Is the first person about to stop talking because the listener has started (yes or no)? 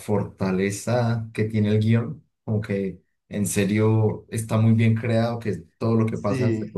no